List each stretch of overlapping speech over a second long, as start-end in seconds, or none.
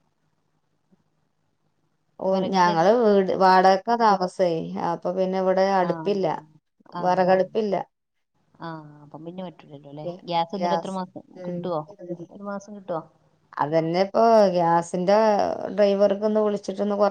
none